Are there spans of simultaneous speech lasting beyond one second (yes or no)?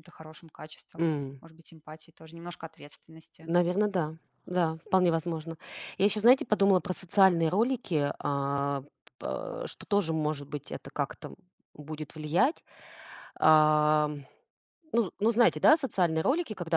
no